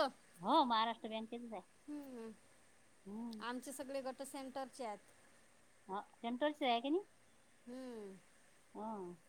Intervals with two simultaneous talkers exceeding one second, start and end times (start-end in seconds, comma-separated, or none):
none